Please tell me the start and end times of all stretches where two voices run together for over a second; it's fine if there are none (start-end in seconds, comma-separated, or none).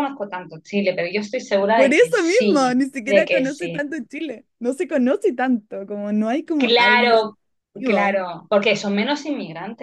1.7-3.9